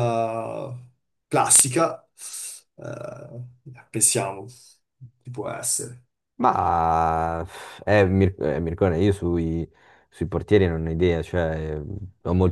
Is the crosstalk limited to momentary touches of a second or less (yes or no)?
yes